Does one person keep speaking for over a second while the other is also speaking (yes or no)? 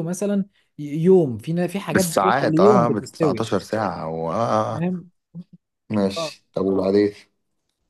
yes